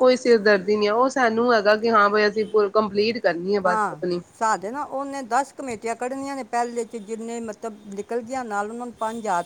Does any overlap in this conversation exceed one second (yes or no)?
no